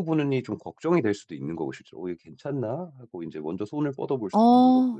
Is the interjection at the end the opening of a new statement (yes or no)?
yes